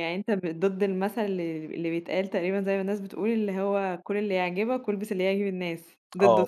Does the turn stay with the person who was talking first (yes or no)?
no